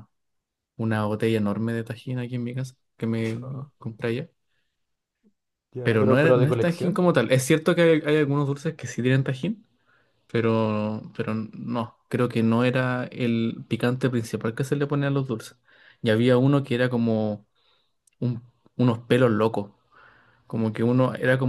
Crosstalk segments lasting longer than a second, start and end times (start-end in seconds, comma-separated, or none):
5.8-7.1